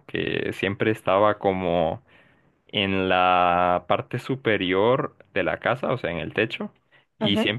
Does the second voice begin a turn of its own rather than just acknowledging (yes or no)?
no